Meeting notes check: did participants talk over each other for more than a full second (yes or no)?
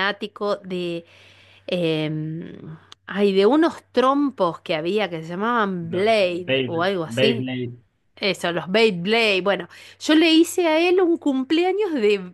yes